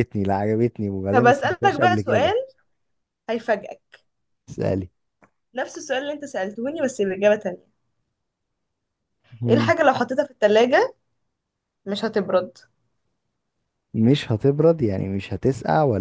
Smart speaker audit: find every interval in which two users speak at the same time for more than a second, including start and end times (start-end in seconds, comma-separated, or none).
1.1-2.3